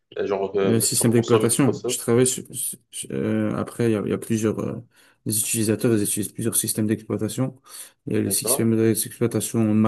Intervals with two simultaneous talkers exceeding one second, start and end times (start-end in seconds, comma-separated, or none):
0.7-2.0